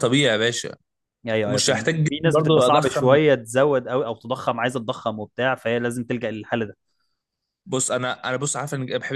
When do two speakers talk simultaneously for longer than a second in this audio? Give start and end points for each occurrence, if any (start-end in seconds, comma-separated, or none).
1.4-3.2